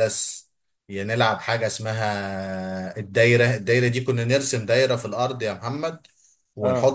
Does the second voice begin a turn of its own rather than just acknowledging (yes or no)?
no